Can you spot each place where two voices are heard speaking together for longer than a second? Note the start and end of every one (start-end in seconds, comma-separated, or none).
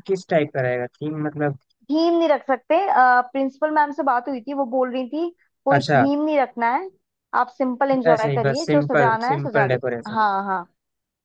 8.1-10.2